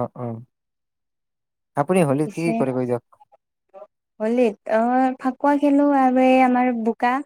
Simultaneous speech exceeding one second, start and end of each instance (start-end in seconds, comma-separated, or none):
none